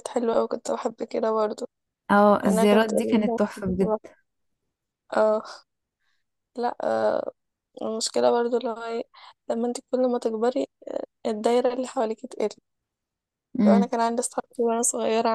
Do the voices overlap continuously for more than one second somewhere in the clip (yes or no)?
yes